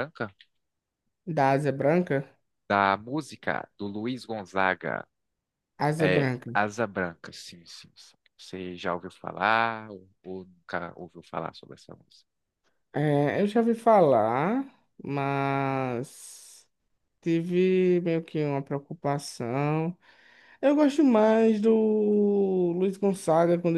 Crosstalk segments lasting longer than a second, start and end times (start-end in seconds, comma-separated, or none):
none